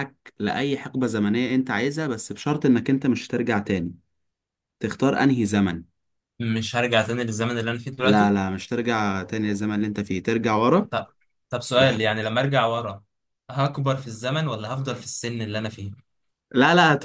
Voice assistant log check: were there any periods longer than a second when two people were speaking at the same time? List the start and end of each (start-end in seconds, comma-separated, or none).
none